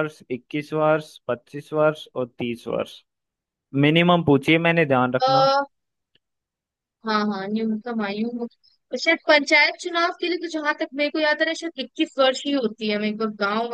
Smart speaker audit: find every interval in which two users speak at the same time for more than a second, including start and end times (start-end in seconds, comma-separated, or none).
none